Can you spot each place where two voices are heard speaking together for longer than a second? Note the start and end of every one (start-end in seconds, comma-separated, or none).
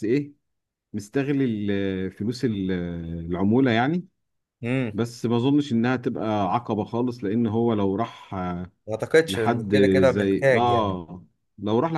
9.3-11.0